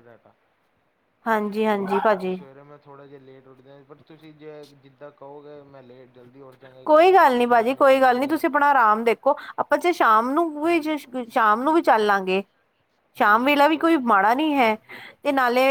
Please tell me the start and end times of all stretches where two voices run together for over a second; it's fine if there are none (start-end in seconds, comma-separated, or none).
6.8-8.4